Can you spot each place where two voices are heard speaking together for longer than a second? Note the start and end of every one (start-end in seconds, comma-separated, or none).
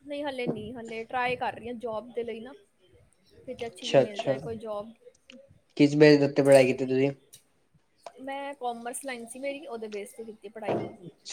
none